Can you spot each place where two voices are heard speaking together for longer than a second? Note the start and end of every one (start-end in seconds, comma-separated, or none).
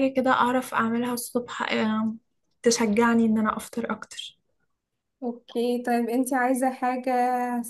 none